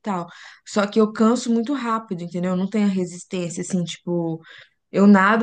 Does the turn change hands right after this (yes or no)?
no